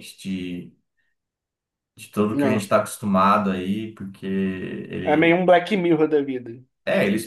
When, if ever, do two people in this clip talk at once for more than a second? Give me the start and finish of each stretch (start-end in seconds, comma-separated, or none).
none